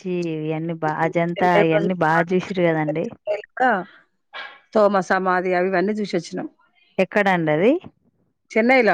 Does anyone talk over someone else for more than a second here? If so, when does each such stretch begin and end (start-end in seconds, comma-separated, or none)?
1.3-3.0